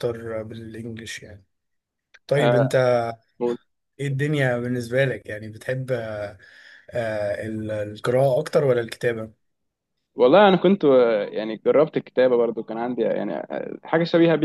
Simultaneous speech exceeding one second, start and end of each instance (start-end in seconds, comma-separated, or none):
none